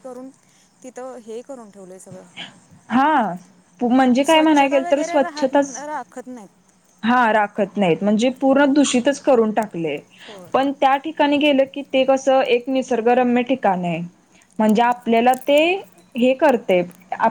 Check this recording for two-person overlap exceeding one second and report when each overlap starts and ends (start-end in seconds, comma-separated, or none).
4.2-5.8